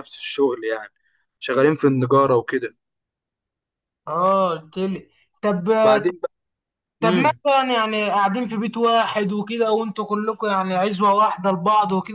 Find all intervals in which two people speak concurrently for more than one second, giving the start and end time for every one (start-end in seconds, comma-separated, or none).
none